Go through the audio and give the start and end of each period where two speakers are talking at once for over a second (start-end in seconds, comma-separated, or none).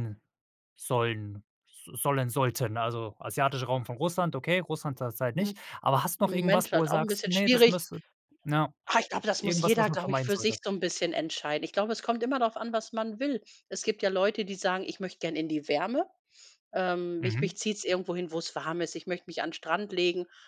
6.2-7.8, 9.4-10.6